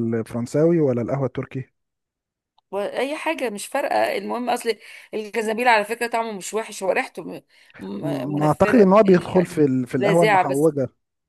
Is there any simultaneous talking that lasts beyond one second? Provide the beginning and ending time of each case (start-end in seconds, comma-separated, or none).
8.0-10.7